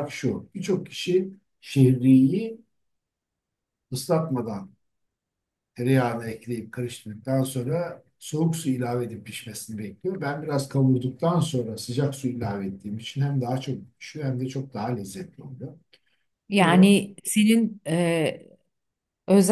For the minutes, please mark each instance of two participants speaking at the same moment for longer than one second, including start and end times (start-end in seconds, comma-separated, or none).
none